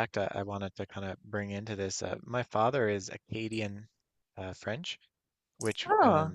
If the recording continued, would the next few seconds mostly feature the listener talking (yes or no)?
no